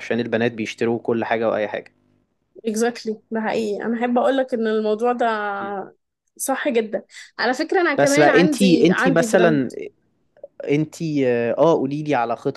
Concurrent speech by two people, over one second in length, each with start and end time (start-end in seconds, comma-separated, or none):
8.0-9.7